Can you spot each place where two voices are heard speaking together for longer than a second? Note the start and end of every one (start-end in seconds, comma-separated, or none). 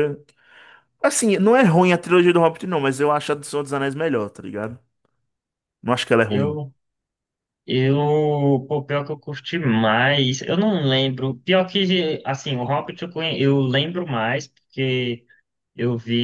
none